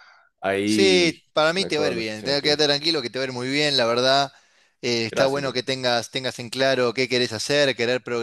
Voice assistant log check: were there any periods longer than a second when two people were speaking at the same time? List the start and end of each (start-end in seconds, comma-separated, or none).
0.6-2.6